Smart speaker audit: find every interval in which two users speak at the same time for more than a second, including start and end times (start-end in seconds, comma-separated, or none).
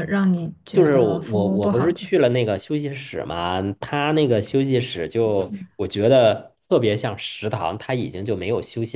0.7-2.1